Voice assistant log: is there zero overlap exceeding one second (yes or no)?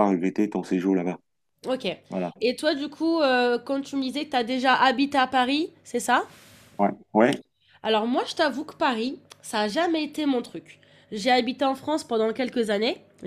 yes